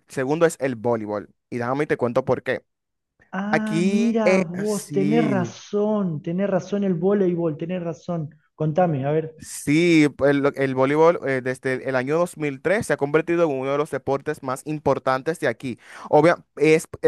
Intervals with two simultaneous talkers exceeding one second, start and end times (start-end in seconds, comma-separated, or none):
3.5-5.5